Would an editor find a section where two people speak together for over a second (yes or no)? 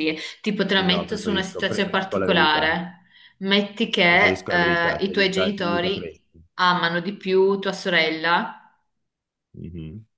yes